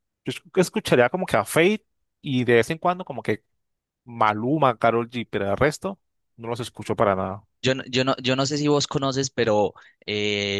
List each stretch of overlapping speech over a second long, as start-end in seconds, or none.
none